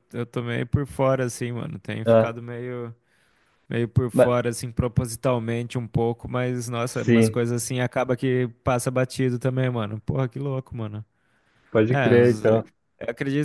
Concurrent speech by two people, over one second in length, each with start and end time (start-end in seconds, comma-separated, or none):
none